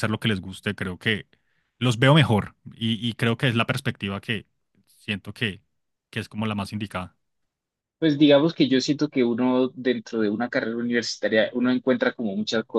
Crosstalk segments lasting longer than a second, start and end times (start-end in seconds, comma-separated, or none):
none